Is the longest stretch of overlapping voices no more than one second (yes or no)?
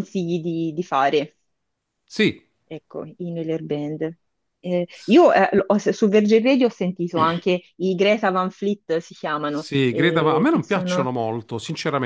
no